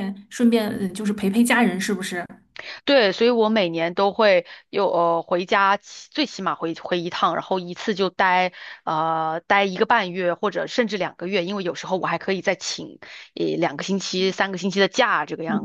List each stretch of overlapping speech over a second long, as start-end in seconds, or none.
none